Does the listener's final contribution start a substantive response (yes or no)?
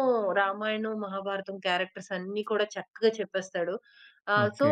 no